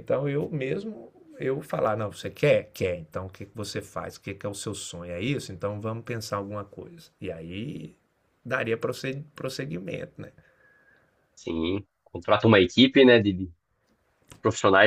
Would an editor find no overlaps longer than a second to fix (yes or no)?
yes